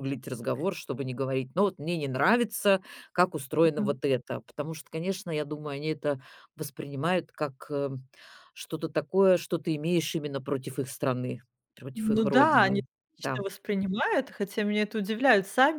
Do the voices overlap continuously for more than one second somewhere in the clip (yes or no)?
yes